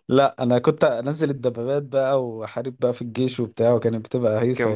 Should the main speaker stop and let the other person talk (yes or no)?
yes